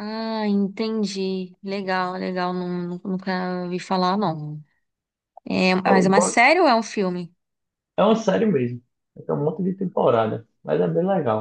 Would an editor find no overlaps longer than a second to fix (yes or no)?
yes